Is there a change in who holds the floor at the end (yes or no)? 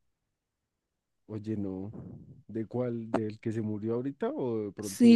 yes